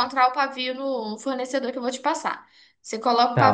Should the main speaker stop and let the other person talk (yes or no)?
yes